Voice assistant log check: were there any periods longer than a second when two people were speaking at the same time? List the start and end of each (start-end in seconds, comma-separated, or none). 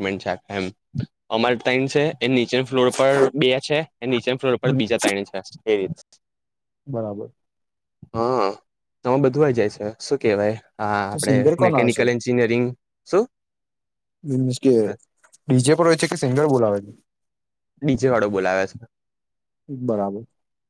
none